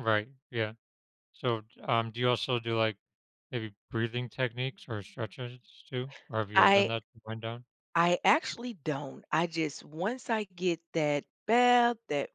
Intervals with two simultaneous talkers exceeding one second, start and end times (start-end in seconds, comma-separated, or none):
none